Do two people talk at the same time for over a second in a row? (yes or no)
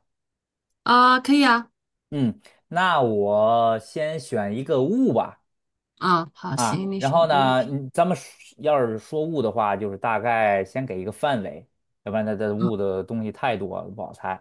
yes